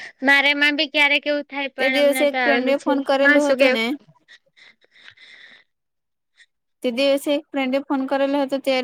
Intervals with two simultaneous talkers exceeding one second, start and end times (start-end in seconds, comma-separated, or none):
1.8-3.8